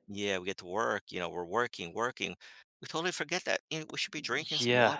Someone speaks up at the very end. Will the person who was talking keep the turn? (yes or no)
no